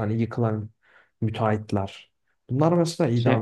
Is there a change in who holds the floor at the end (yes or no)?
no